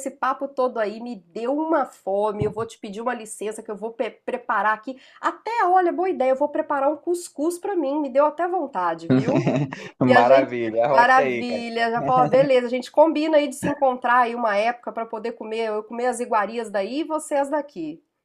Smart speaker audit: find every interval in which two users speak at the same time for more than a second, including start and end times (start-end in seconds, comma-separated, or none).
10.1-11.6